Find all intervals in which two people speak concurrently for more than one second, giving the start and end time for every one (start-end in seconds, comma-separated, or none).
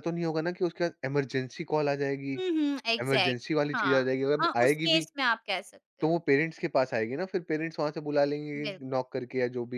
3.0-5.0